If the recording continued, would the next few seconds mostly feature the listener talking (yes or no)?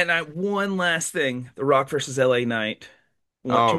yes